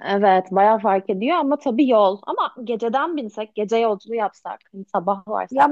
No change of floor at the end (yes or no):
no